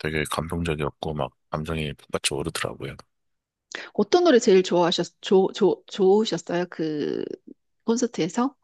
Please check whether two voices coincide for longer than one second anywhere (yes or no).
no